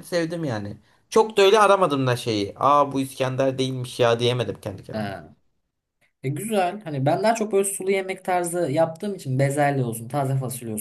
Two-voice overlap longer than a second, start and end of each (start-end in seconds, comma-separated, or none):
none